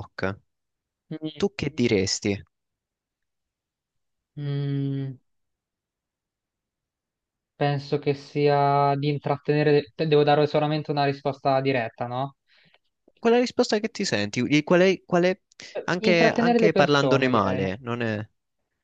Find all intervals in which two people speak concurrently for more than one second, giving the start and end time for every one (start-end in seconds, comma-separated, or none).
15.8-17.7